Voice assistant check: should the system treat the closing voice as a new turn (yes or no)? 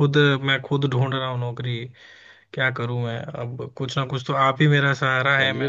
no